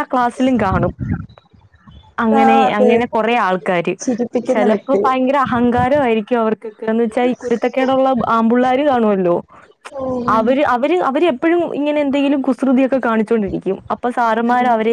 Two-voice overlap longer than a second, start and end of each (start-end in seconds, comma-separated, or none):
none